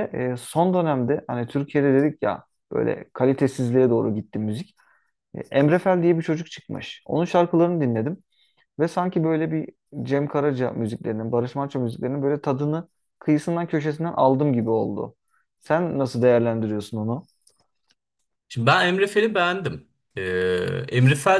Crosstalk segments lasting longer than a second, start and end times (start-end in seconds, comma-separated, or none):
none